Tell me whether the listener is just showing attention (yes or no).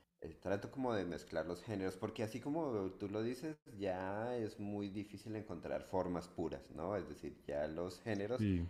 yes